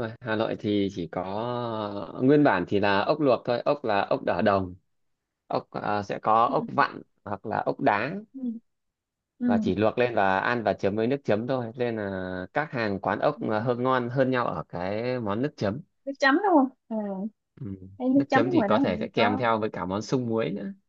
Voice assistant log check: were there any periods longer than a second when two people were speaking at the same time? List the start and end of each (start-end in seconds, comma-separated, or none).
18.1-19.4